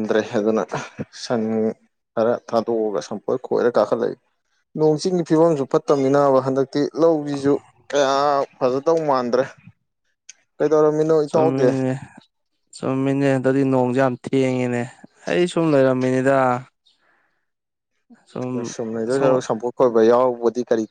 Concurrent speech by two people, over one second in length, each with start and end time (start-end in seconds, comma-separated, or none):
none